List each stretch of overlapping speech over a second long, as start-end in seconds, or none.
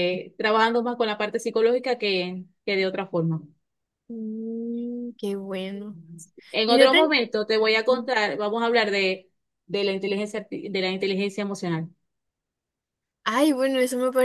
none